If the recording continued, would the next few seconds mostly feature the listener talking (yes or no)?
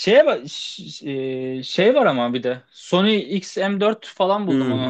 yes